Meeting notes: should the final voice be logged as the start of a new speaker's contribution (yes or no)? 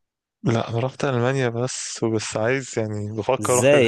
yes